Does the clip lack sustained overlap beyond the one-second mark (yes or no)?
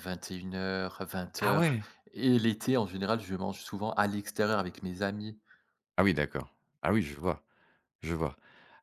yes